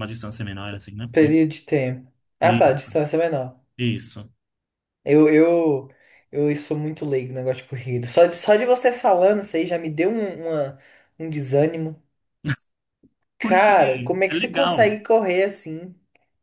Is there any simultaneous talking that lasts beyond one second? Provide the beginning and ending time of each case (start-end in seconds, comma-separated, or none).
13.4-14.9